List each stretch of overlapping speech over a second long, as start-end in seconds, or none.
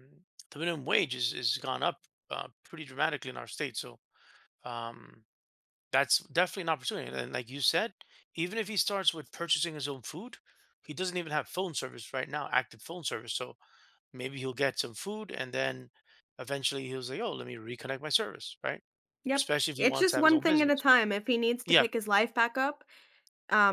19.4-20.8